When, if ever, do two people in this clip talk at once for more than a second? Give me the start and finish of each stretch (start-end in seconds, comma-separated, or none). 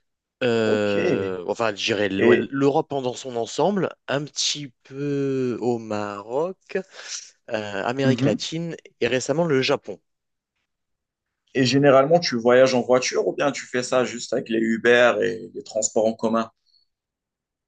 none